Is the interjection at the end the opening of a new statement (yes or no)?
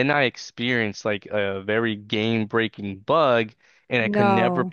no